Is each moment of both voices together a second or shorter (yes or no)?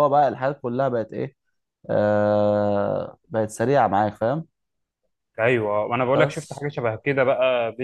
yes